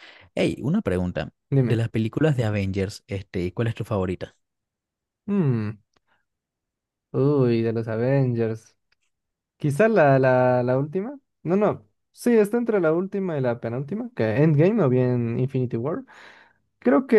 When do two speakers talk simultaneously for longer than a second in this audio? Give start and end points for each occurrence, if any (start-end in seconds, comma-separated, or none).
none